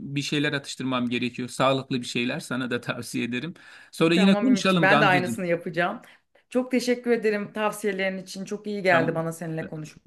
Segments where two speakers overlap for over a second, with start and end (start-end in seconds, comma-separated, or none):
4.1-5.5